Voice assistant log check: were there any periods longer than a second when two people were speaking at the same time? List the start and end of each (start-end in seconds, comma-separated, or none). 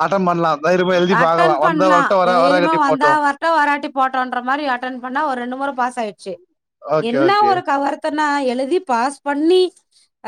1.2-3.1